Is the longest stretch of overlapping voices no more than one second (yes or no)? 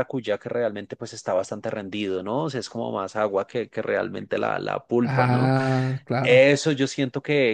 yes